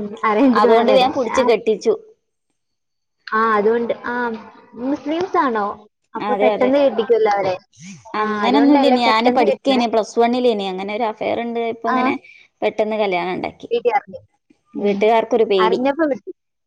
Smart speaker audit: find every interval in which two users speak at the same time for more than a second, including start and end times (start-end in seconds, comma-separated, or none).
8.2-9.9